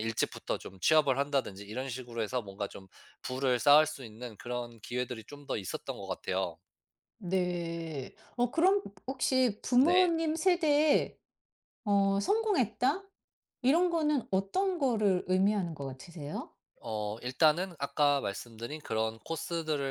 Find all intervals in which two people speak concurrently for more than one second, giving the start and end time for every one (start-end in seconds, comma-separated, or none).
none